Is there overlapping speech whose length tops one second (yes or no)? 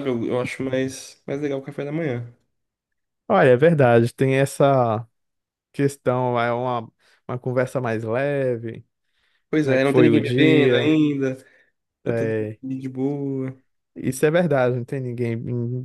yes